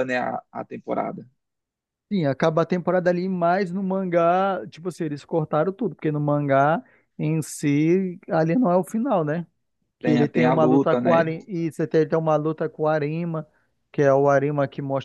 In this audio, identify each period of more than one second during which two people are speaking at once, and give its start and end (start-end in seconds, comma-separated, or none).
10.0-11.3